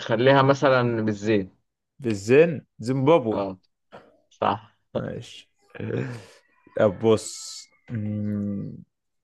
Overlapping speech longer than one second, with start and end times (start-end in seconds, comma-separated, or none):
none